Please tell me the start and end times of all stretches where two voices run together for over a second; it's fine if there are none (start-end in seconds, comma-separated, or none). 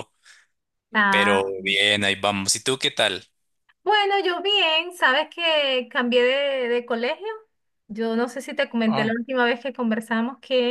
none